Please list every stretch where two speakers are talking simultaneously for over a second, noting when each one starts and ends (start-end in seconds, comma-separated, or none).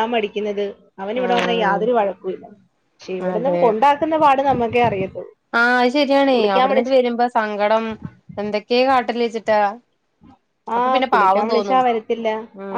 none